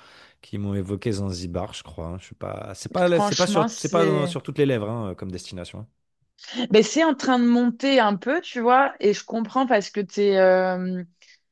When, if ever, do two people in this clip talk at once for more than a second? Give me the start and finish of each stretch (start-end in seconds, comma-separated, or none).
3.1-4.4